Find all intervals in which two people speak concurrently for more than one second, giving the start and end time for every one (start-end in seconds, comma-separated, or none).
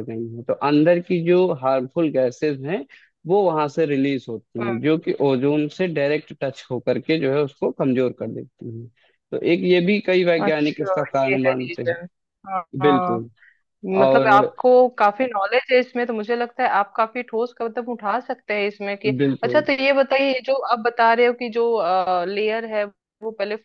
10.4-11.9